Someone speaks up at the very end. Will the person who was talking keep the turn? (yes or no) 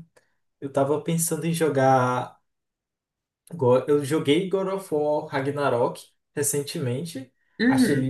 yes